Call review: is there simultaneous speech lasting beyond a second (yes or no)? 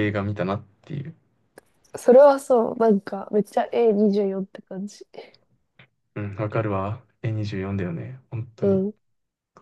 no